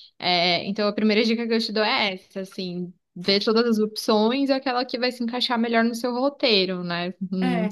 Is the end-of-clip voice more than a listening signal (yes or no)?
yes